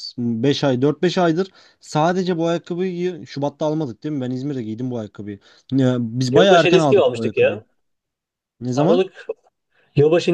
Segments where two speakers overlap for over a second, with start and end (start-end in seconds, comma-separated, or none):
6.3-7.6